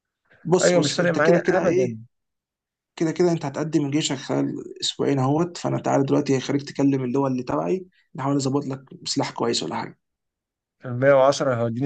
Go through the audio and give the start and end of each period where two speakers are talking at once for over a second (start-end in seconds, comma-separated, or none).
0.6-2.0